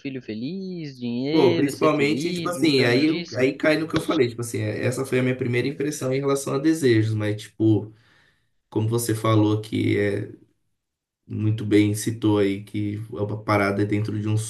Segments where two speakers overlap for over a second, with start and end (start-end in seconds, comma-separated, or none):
1.3-3.4